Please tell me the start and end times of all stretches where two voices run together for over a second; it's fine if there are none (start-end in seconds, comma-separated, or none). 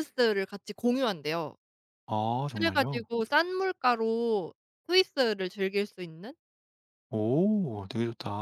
none